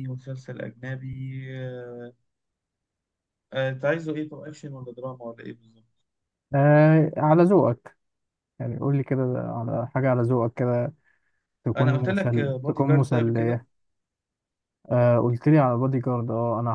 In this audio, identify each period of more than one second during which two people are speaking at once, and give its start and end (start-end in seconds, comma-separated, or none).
11.8-13.6